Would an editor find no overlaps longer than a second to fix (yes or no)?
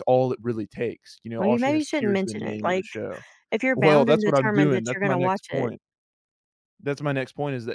no